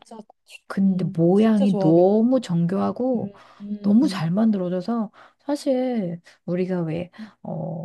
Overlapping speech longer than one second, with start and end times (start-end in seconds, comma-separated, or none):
0.8-2.1